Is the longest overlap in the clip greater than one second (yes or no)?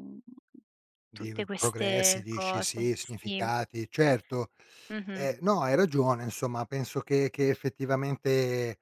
yes